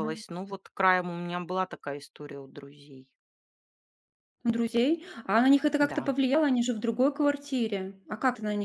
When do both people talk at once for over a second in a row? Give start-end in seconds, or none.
none